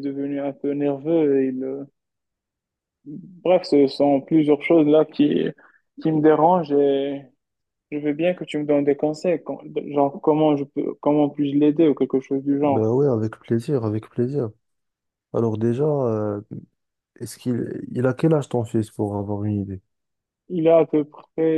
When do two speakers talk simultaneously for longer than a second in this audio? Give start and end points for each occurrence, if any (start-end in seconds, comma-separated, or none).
none